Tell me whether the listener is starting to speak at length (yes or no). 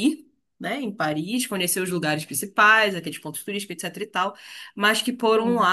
no